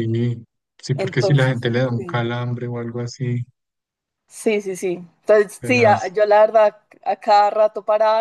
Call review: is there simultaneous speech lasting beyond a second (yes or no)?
yes